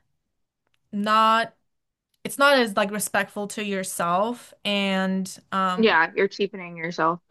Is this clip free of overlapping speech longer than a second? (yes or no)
yes